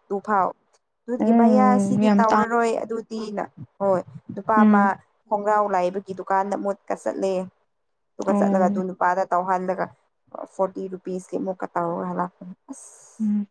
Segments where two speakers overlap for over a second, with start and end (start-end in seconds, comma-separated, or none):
1.2-2.4